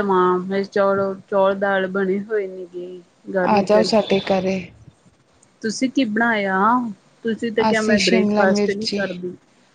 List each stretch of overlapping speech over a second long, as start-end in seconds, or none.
7.7-9.0